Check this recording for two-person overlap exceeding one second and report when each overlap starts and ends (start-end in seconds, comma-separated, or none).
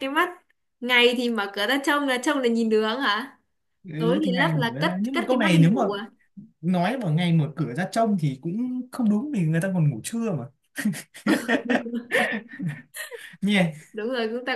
4.0-5.8